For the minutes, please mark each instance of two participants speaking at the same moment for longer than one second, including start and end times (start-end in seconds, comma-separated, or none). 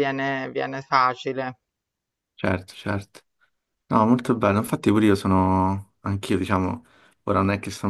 none